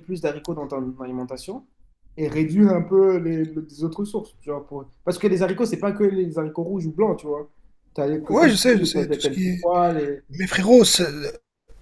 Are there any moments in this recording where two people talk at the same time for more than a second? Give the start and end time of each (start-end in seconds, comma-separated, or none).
8.3-9.7